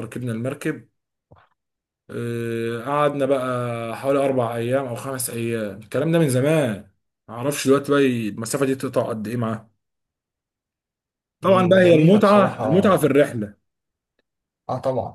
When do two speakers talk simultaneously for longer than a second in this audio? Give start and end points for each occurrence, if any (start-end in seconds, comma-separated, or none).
11.4-12.9